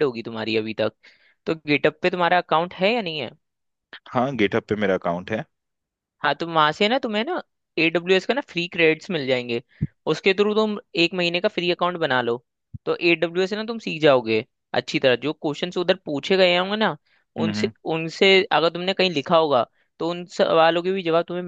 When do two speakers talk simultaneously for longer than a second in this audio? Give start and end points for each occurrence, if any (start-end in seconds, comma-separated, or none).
none